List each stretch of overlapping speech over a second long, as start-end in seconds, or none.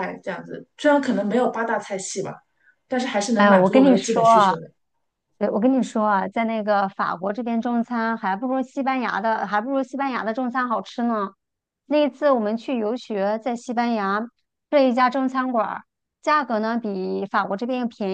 3.3-4.5